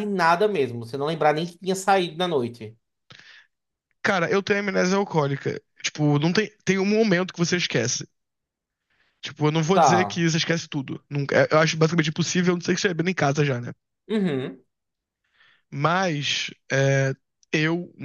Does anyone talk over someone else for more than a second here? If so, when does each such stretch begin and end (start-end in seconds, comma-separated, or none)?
none